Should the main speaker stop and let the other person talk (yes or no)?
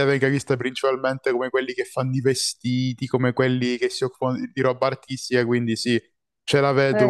yes